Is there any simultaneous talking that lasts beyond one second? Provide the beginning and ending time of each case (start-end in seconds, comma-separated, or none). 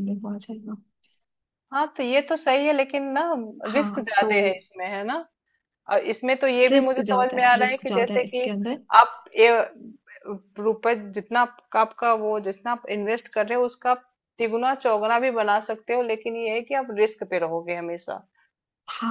6.7-8.5